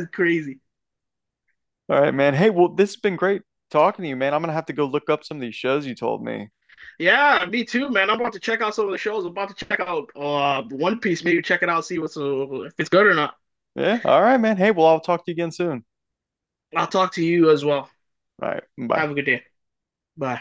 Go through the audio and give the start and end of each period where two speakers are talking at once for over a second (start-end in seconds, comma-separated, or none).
none